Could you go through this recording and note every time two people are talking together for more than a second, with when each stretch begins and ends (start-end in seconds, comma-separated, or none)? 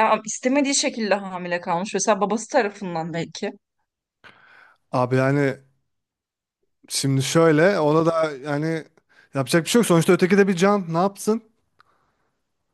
none